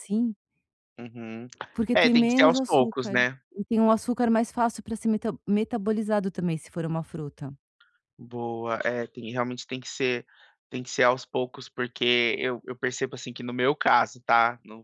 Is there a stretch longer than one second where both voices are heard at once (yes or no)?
yes